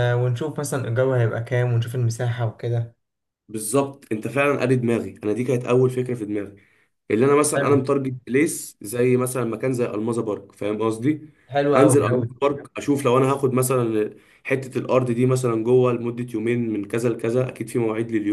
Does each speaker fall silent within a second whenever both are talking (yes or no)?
yes